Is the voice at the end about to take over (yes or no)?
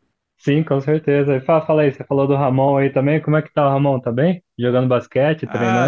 yes